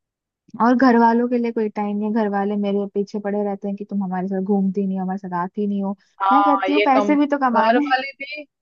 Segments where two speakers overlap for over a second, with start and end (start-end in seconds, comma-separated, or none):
6.3-8.0